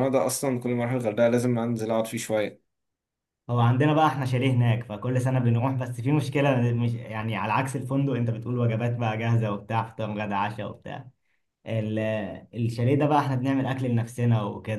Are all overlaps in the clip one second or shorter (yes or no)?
yes